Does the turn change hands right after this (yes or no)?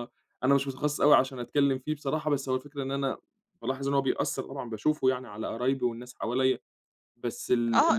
yes